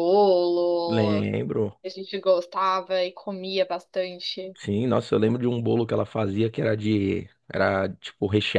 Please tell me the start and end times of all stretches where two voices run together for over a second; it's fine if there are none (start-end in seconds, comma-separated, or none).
none